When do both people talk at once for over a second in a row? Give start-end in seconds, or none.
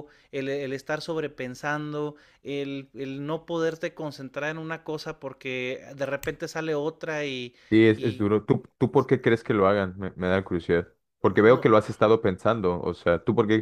none